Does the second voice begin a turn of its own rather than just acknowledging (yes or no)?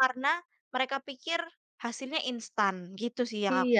yes